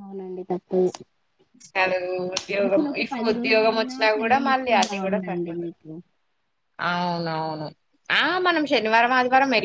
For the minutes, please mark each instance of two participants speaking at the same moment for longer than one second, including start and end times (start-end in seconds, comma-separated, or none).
3.1-5.7